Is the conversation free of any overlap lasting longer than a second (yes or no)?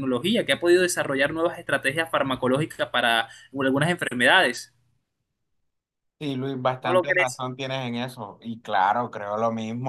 yes